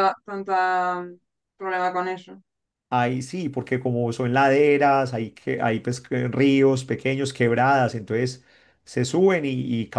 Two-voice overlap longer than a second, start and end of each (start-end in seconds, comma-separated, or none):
none